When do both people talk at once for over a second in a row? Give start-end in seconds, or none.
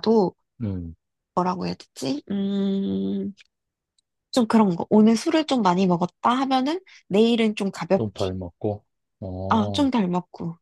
none